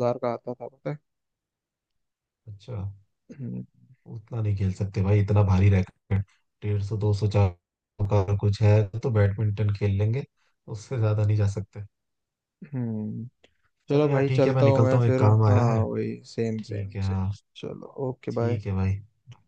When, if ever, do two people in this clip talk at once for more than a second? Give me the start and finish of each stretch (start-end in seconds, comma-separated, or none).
13.9-15.8